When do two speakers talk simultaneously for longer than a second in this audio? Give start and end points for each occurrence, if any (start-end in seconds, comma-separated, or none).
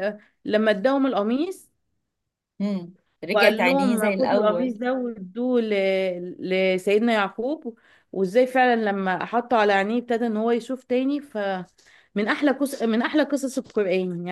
3.3-4.7